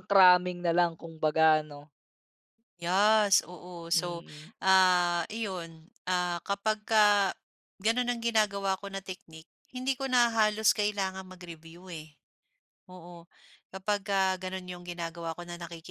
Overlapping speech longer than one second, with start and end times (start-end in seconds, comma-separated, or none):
none